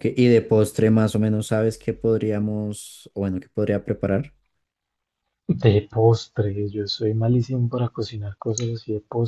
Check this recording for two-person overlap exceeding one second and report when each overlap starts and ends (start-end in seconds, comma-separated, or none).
none